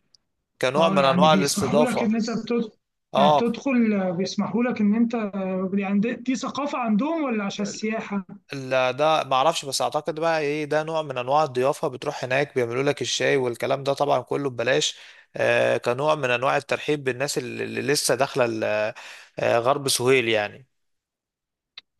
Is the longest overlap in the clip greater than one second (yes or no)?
yes